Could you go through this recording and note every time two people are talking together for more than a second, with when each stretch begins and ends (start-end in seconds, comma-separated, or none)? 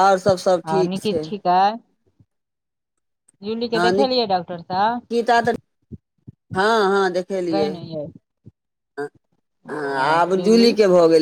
3.9-5.1